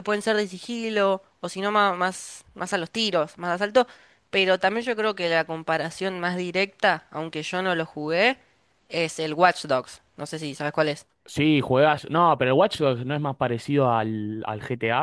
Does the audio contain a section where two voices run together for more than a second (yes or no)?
no